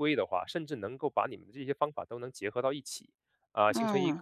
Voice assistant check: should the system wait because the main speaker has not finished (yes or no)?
yes